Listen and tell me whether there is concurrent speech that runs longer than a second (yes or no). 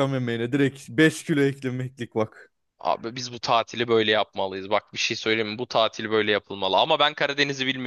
no